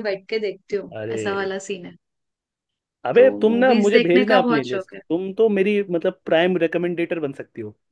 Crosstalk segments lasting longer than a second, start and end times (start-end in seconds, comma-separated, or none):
3.1-5.0